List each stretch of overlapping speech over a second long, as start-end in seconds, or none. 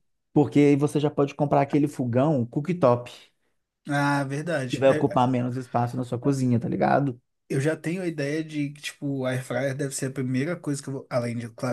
none